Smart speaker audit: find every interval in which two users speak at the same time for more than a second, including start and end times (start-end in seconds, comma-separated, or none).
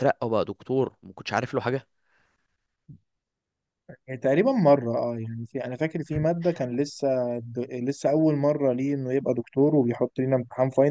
none